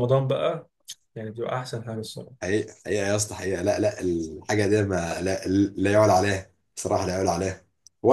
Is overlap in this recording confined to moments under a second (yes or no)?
yes